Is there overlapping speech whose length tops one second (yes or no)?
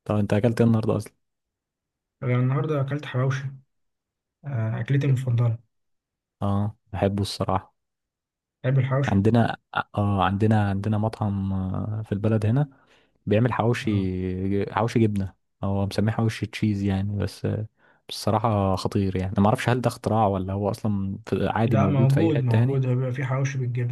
yes